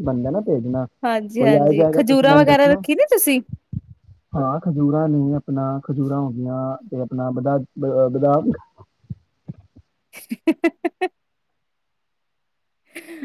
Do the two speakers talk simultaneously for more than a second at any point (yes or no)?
yes